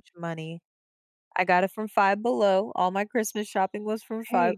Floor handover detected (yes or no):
yes